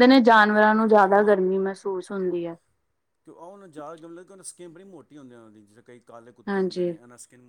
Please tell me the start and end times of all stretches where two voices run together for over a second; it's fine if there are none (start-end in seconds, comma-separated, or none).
none